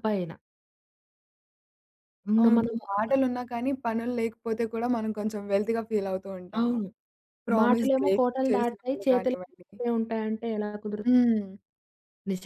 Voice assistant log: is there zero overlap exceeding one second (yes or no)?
no